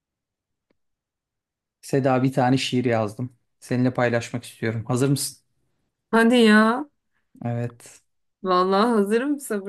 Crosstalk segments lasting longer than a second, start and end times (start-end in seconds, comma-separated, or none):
none